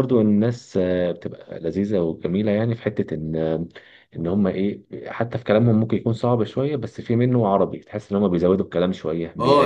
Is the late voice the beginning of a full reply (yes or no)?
yes